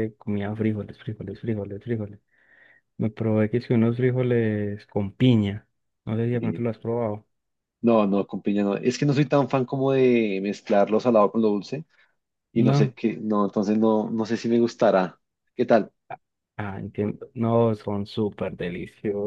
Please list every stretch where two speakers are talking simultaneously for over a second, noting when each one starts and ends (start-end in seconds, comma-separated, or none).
none